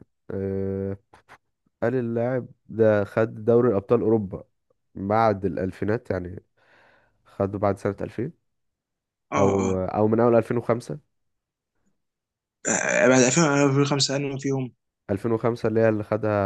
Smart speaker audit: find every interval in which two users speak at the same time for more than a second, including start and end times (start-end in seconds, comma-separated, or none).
none